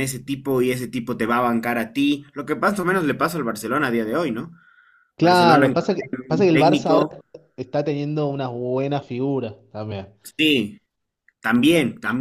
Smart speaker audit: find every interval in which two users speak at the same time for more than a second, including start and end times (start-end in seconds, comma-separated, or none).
5.2-7.0